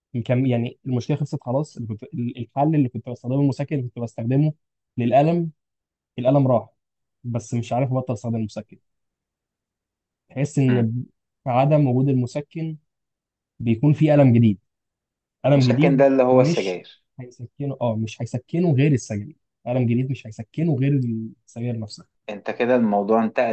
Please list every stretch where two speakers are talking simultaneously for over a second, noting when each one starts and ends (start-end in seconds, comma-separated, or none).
15.6-16.8